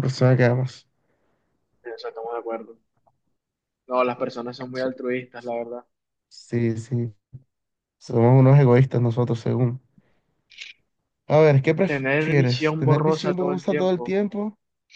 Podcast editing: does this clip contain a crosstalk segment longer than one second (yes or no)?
yes